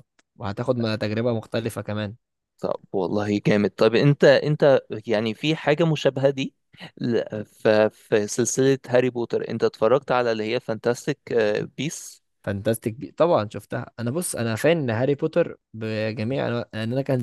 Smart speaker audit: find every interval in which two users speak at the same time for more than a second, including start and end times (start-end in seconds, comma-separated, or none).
none